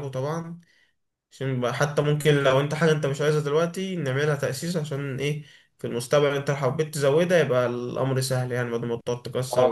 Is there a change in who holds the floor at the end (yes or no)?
yes